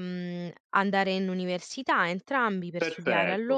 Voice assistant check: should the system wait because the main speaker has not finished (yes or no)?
no